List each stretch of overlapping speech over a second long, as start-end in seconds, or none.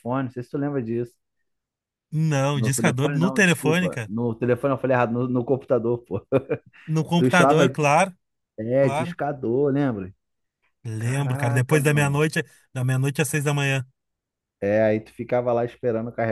2.5-3.9, 11.0-12.2